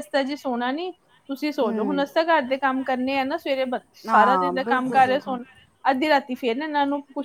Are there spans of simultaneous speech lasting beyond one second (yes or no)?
yes